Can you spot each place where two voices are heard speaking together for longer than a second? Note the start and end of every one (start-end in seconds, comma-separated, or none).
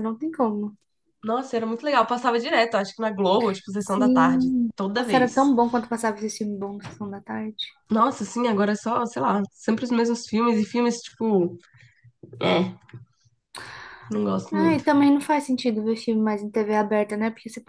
3.8-5.4